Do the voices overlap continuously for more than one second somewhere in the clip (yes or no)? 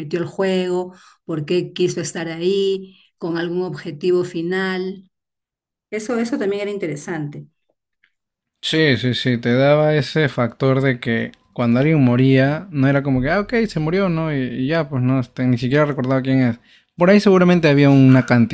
no